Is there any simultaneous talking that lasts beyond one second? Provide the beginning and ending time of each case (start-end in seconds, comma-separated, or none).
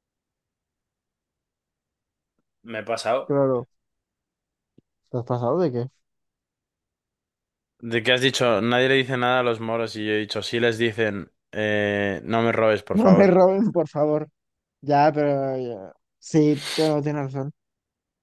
none